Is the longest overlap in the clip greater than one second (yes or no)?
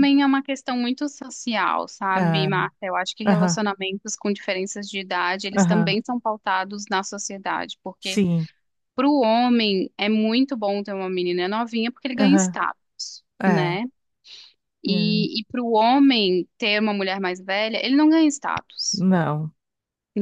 no